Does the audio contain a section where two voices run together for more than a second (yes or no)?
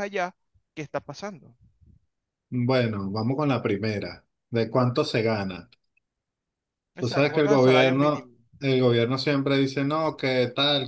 yes